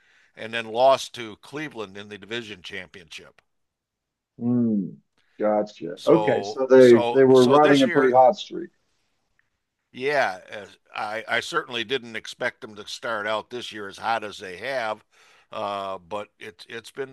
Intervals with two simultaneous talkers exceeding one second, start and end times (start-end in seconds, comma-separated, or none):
5.9-8.2